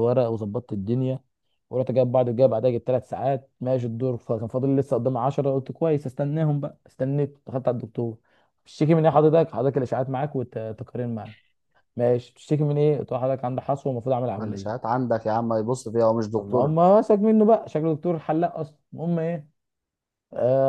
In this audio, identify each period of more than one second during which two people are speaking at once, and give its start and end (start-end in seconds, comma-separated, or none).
none